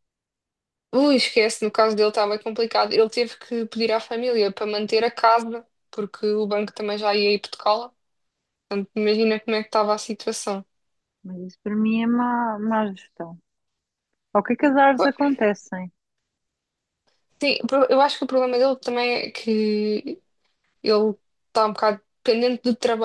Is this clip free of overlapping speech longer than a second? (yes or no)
yes